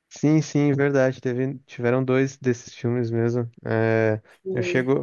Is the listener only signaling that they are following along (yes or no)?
yes